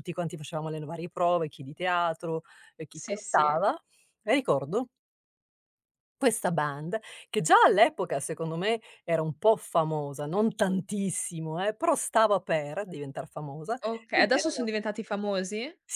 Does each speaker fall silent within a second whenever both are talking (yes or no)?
yes